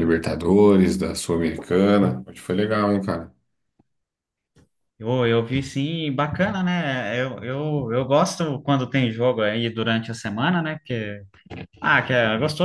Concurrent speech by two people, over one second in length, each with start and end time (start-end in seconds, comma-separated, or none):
none